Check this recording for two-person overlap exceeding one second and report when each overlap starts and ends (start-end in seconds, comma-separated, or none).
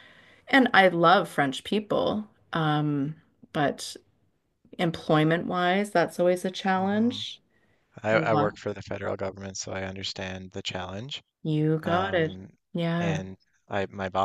none